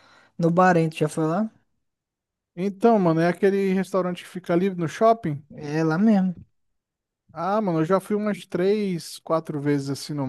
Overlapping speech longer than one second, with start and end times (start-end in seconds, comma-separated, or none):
none